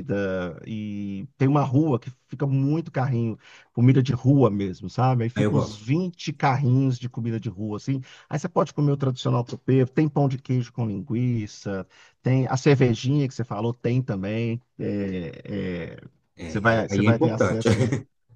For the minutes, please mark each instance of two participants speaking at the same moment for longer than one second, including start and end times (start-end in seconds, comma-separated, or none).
16.4-17.7